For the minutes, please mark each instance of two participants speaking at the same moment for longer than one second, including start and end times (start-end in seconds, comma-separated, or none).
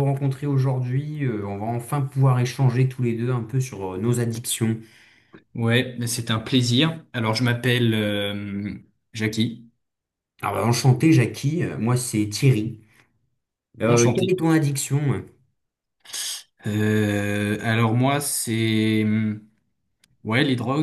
none